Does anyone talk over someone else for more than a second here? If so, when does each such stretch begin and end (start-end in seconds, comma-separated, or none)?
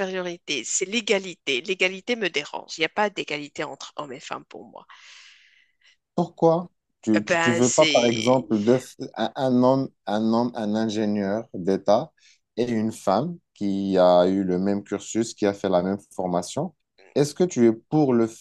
7.2-8.4